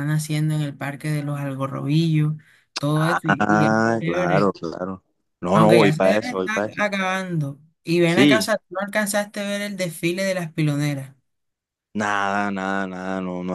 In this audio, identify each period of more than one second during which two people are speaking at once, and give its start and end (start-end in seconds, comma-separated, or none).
2.9-4.5, 5.5-6.8